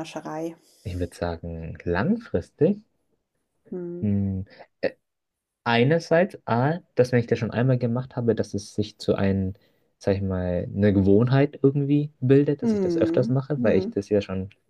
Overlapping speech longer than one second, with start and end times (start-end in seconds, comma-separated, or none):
12.6-13.9